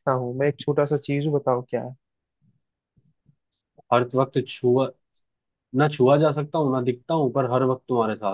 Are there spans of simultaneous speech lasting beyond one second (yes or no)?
no